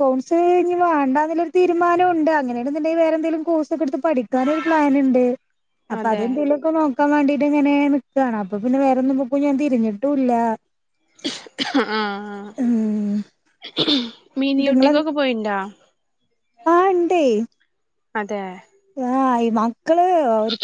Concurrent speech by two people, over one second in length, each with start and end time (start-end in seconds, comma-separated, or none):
none